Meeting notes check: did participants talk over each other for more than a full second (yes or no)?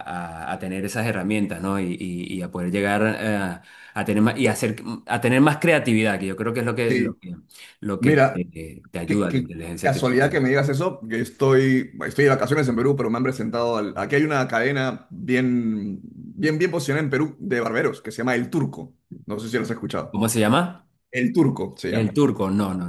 yes